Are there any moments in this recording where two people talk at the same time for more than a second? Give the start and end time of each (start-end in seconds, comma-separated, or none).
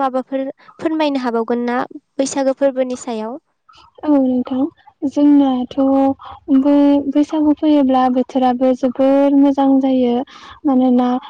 none